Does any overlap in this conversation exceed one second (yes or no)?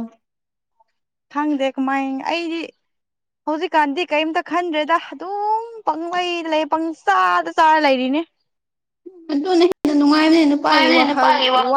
no